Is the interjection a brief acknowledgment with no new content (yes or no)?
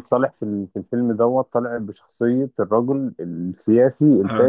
no